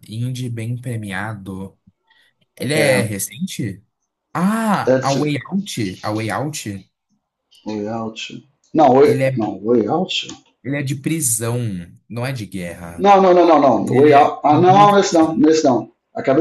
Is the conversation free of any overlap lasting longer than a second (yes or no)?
no